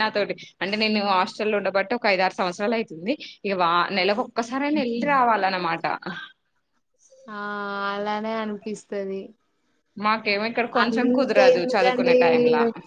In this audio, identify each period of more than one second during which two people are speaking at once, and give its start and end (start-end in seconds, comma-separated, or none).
10.8-12.2